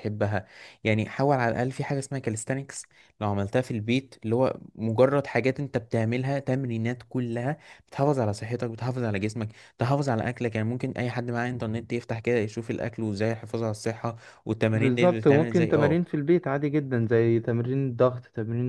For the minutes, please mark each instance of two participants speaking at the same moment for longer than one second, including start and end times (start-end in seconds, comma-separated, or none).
14.7-16.0